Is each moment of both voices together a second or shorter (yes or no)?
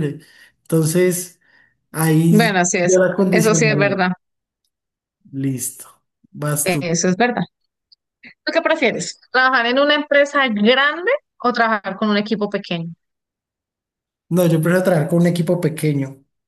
no